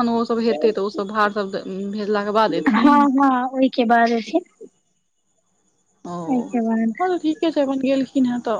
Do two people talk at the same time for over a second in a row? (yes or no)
no